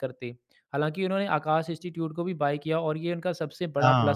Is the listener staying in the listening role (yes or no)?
yes